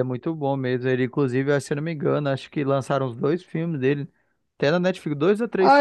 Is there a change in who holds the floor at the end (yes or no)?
yes